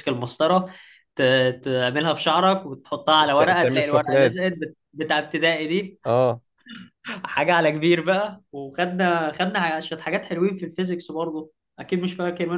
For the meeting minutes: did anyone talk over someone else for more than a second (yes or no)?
yes